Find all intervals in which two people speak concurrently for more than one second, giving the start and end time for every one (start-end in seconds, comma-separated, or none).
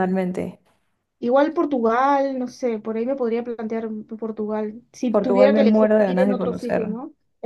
5.1-6.9